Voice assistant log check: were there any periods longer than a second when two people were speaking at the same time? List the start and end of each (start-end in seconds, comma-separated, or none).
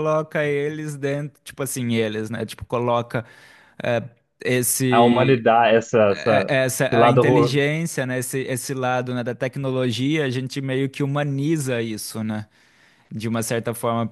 6.1-7.6